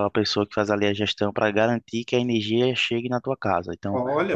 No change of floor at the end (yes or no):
yes